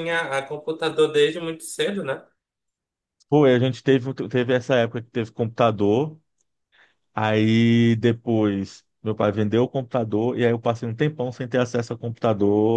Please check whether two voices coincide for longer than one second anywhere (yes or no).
no